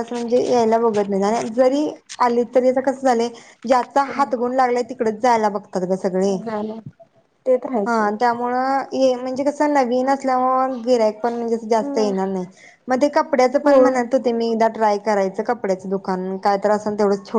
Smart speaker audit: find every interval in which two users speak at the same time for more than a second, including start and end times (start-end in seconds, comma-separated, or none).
none